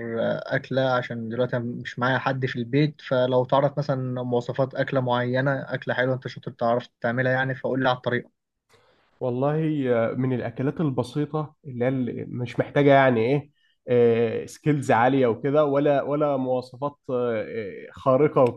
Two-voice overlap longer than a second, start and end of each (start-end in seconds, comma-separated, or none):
none